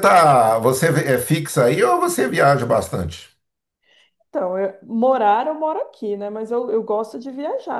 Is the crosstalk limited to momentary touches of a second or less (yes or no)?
yes